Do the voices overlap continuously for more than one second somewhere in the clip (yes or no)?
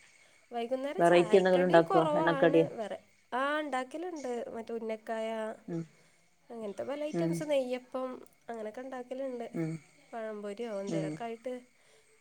yes